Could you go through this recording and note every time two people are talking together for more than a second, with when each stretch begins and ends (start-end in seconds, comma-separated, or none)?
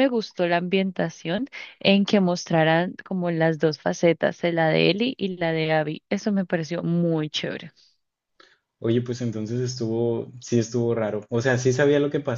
none